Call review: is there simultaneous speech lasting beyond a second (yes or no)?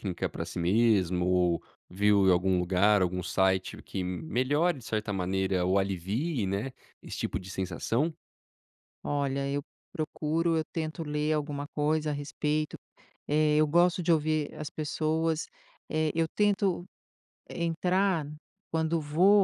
no